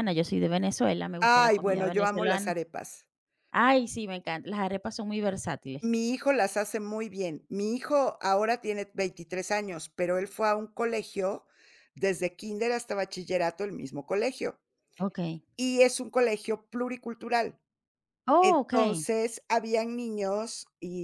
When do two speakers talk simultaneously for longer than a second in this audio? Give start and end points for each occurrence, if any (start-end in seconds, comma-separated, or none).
1.2-2.6